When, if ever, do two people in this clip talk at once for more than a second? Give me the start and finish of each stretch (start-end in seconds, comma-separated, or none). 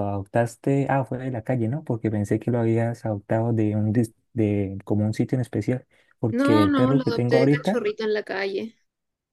6.3-7.8